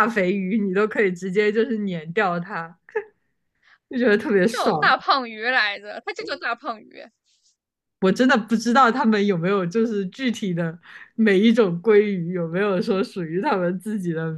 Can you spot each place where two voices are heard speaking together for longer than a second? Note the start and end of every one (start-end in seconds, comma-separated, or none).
none